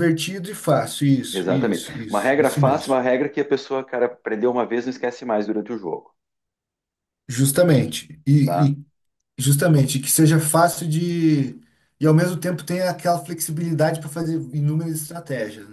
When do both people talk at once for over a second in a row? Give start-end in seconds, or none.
1.3-3.0